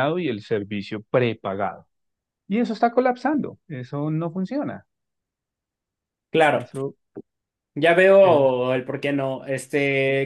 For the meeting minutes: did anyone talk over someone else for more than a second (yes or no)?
no